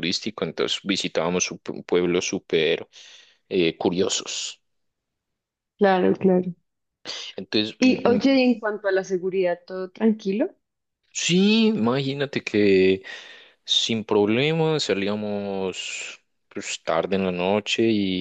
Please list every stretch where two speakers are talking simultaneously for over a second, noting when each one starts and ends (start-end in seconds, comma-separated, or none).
none